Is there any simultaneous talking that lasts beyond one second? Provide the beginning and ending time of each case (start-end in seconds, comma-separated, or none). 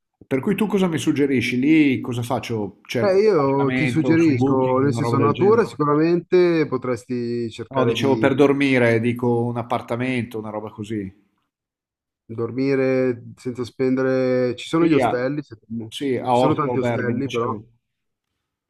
3.0-5.7, 16.3-17.6